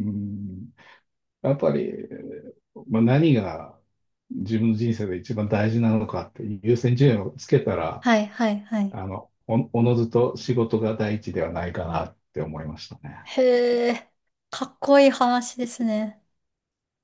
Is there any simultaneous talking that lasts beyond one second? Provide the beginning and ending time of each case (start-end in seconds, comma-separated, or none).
none